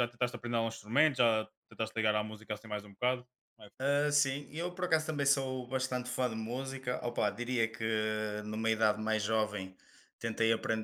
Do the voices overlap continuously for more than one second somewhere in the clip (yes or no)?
no